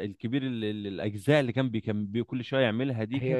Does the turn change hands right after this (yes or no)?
yes